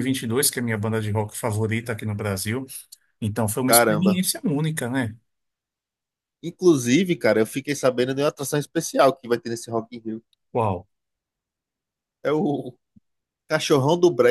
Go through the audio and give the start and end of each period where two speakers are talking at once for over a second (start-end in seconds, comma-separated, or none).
none